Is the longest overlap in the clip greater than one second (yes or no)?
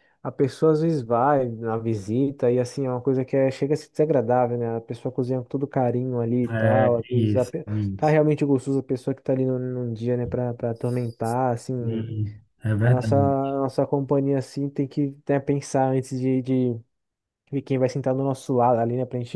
yes